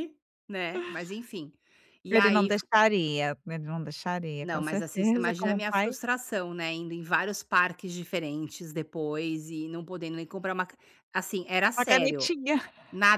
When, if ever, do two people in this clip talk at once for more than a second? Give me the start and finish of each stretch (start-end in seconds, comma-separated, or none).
4.4-5.9